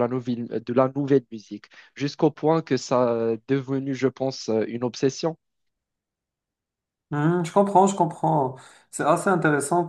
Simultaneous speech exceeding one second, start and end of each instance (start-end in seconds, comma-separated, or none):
none